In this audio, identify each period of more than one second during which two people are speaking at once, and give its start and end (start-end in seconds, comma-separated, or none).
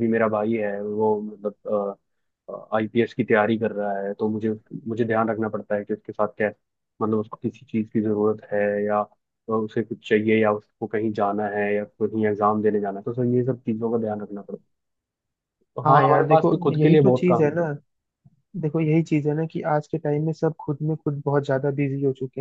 15.8-17.6